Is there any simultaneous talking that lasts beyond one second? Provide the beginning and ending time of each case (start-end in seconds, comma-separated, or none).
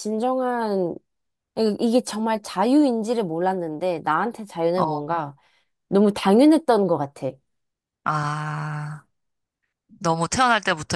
none